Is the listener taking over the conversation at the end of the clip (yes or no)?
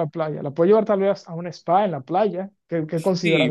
yes